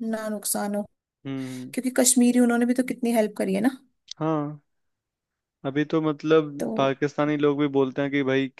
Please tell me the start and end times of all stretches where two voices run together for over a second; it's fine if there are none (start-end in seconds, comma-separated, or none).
none